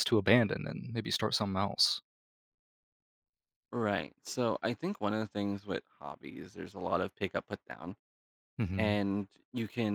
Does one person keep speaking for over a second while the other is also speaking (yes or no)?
no